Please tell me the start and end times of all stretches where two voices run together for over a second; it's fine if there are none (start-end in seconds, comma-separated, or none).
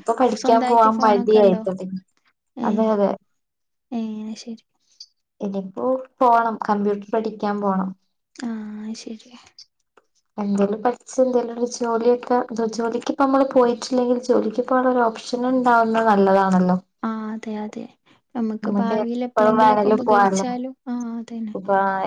19.1-20.5